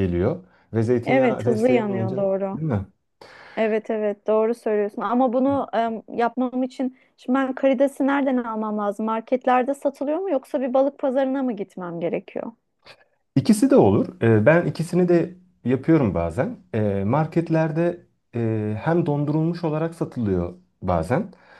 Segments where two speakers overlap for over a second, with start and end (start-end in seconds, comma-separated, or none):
1.1-2.6